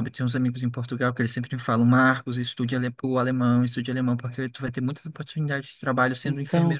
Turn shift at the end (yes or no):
no